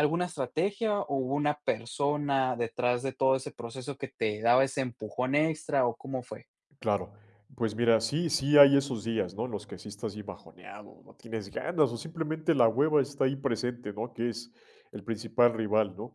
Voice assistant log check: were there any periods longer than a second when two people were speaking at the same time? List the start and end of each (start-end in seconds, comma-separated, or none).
none